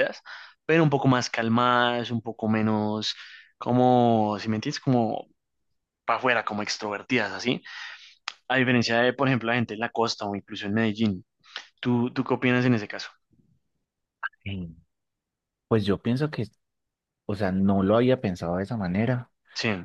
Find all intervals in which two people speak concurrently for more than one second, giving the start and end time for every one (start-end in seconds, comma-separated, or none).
none